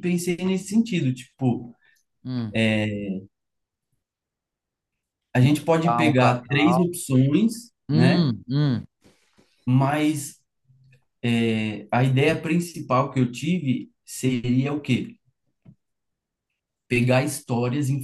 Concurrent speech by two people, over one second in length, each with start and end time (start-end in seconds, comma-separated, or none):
5.4-6.9